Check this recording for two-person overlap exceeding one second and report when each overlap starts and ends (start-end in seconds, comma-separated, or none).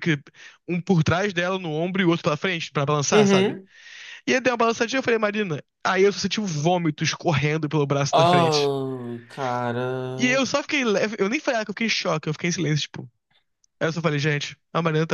none